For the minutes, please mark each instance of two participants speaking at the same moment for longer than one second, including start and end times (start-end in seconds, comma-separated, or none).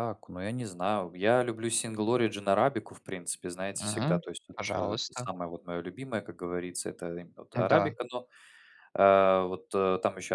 3.7-5.3